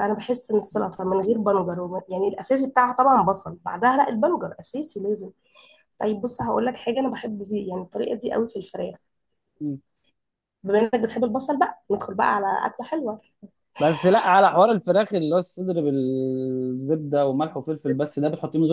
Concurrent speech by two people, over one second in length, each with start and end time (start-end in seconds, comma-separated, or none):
none